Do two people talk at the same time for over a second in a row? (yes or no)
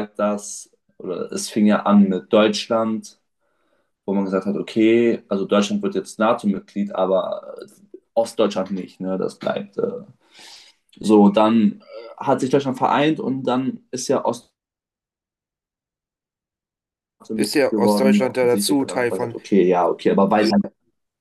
yes